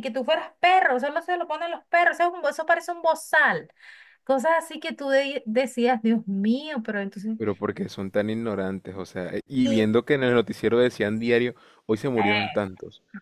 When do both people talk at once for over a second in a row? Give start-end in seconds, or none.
none